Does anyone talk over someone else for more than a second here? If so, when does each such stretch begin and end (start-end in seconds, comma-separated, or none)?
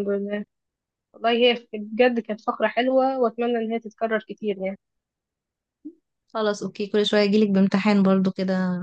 none